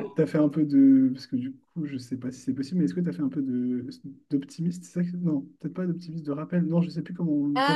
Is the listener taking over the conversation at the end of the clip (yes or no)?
no